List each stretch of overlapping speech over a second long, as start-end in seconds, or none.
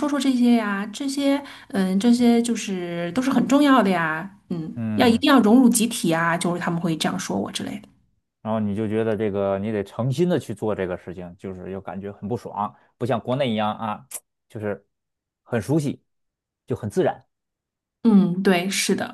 none